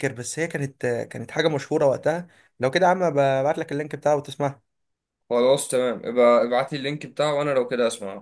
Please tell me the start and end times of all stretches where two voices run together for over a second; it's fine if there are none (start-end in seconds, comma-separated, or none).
none